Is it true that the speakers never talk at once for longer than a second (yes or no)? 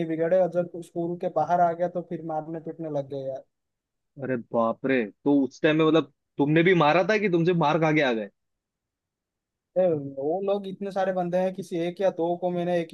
yes